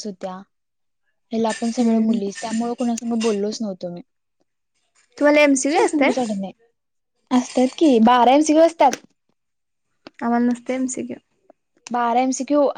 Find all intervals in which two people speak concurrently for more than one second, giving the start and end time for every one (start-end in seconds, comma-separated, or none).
none